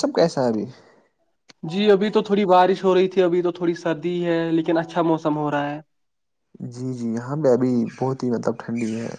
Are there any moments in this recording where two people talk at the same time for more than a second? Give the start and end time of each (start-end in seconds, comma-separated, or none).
none